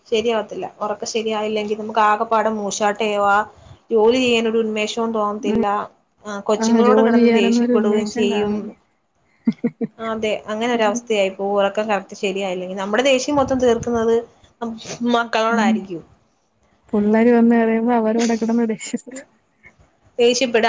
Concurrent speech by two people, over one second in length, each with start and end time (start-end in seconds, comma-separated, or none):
6.6-8.5